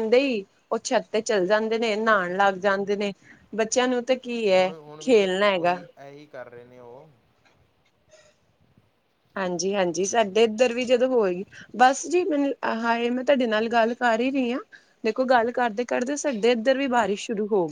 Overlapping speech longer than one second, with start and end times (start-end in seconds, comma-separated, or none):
none